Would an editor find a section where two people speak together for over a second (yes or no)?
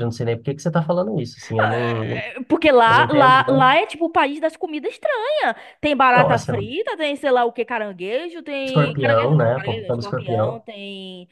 yes